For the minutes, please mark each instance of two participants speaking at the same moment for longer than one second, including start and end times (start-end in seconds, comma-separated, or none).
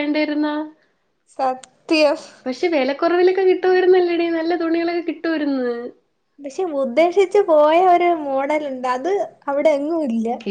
none